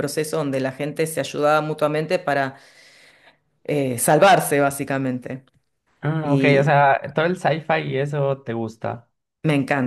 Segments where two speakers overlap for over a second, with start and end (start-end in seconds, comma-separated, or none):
none